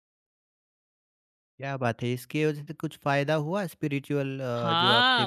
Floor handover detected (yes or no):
yes